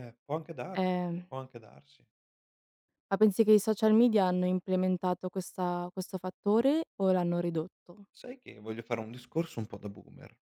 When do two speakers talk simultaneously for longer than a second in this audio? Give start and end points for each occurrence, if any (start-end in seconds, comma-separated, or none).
none